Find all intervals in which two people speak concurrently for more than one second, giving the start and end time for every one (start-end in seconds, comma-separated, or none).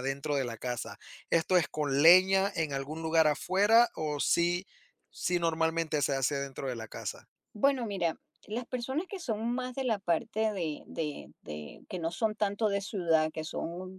none